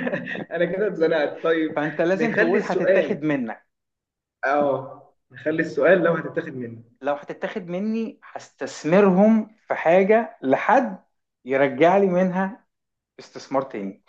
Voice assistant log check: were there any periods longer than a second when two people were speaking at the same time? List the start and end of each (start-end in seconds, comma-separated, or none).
1.8-3.2